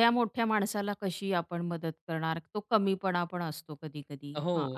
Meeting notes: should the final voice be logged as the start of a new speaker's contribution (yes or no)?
yes